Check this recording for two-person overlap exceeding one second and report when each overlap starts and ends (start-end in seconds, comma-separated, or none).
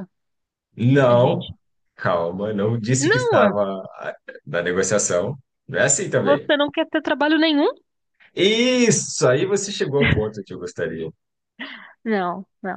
none